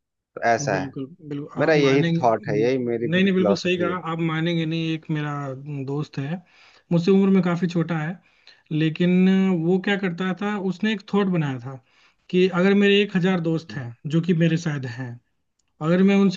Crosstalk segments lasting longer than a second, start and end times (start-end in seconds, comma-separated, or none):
1.6-4.0